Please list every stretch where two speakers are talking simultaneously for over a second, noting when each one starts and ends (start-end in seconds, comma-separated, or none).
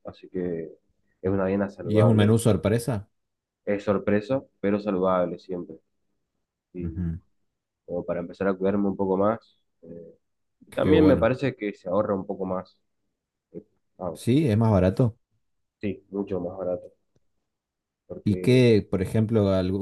none